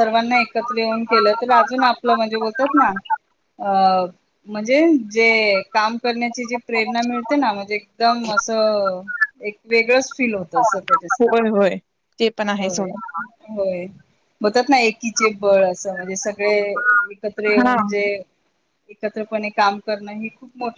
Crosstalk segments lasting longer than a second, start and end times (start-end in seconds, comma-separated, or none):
none